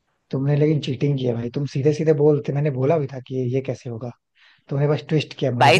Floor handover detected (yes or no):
yes